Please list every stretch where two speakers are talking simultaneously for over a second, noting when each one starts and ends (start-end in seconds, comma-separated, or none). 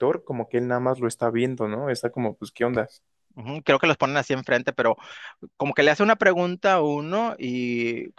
none